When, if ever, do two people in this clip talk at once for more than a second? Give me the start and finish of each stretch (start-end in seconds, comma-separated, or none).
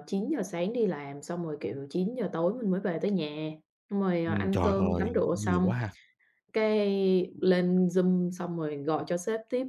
4.3-5.7